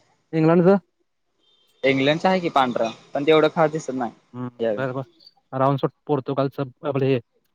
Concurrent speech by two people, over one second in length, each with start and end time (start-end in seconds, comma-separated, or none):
none